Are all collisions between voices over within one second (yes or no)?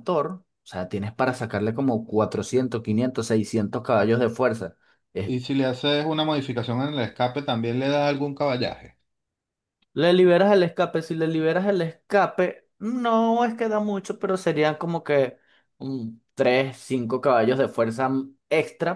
yes